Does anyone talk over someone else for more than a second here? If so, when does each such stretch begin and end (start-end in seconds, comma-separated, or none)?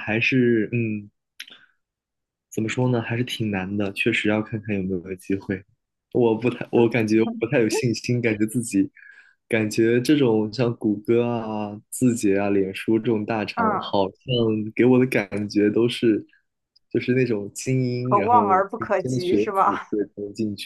18.0-19.9